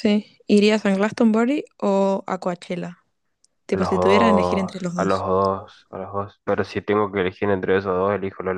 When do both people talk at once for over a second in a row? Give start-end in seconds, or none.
3.7-5.2